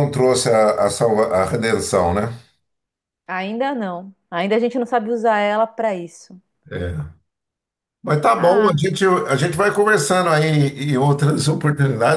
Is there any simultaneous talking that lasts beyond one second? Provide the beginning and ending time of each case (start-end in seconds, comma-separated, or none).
none